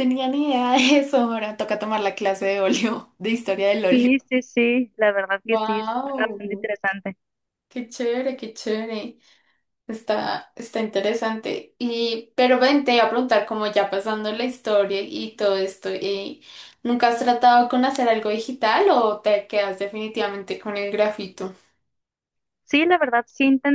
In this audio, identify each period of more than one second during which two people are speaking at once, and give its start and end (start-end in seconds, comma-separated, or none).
5.5-6.7